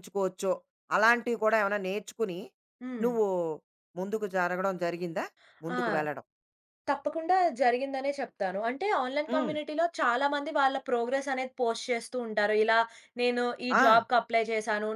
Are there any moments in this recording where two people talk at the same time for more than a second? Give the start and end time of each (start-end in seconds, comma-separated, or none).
none